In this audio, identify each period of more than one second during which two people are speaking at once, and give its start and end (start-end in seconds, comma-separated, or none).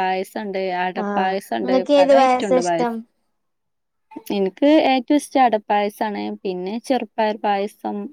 1.1-2.9